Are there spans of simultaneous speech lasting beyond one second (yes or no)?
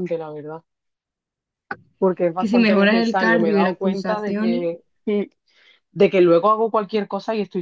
yes